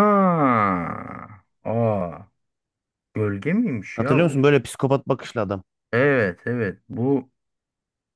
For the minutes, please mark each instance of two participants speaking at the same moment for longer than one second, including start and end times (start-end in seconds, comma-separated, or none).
none